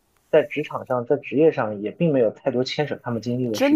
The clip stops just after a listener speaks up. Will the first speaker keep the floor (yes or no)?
no